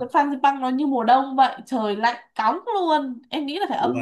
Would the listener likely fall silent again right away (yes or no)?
yes